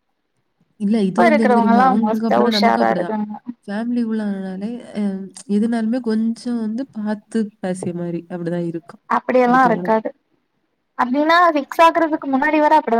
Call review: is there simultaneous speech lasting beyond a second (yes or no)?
yes